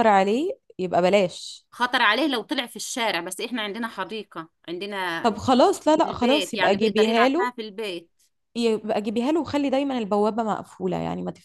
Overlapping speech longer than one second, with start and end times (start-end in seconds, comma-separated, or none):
6.0-7.5